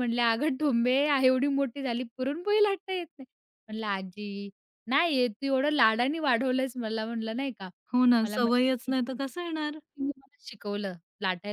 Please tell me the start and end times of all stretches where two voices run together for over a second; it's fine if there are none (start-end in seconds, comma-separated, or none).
none